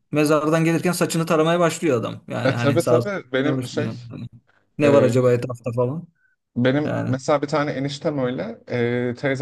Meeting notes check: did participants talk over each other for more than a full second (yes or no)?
yes